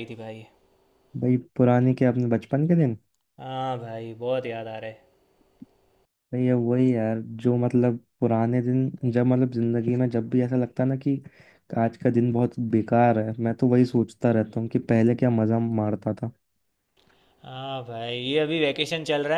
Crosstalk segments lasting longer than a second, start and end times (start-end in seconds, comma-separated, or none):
none